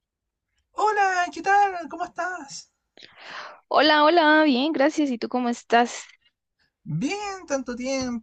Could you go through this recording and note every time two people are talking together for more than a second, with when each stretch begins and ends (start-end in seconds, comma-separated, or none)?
none